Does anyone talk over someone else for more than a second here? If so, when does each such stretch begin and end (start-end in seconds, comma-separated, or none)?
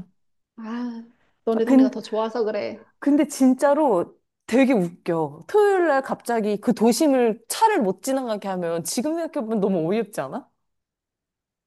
none